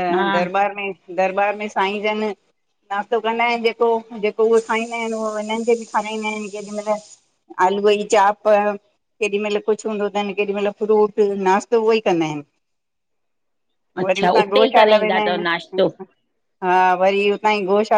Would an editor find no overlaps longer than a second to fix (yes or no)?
no